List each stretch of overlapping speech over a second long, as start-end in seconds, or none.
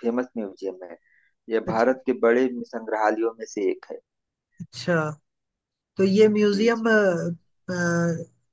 none